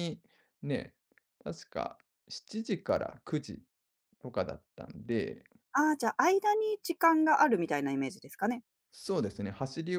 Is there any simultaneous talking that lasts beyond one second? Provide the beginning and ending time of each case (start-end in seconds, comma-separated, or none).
none